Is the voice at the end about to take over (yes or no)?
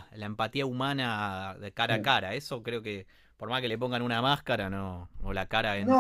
yes